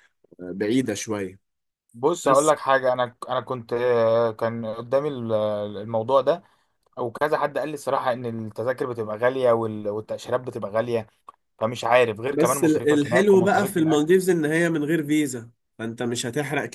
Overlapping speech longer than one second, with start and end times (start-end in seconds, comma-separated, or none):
12.3-14.1